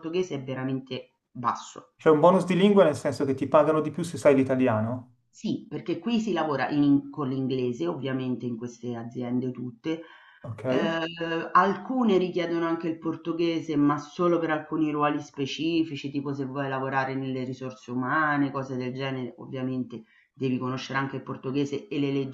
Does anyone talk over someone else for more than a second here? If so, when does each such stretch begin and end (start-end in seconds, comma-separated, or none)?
none